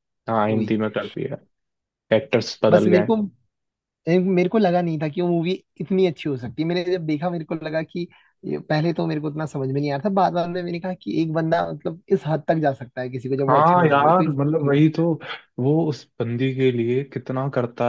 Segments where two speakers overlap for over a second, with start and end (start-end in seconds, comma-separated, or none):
13.5-14.9